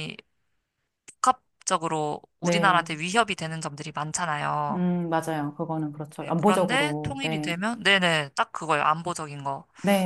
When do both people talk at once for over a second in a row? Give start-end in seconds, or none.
6.2-7.5